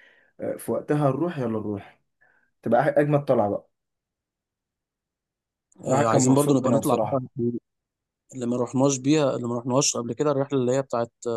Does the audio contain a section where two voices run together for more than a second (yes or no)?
yes